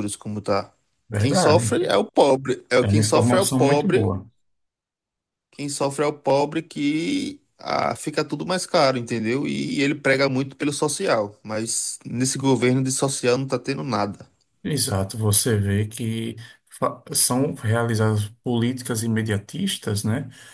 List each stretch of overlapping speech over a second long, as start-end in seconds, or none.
2.8-4.1